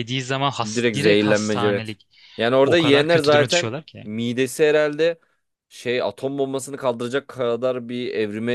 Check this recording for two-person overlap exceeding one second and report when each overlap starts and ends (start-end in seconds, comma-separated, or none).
0.6-2.0, 2.6-4.0